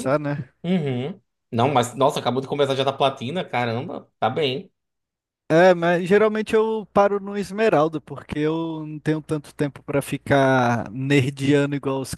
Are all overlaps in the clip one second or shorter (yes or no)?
yes